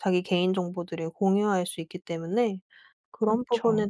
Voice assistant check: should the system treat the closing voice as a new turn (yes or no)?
no